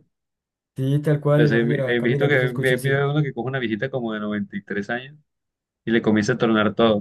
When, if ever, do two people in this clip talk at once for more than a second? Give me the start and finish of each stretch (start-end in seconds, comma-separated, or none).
1.4-3.1